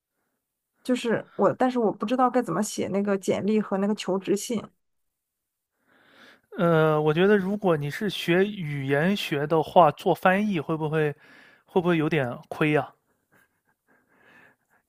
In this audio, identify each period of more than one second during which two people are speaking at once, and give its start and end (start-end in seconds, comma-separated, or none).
none